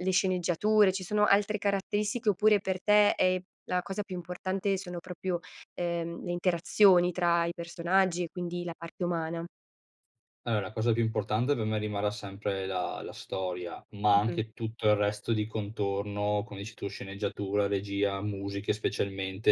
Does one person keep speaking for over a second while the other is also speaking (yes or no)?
no